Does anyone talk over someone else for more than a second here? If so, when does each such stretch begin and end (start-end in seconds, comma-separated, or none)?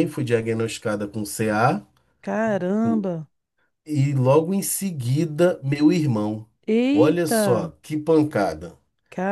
none